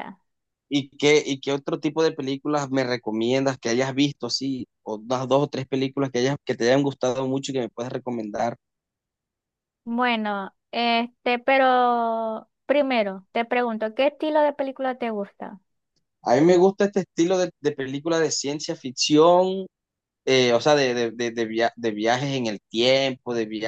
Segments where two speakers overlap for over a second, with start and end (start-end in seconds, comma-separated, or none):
none